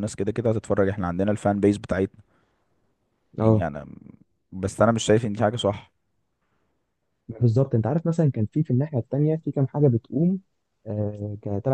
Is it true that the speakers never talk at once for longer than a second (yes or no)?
yes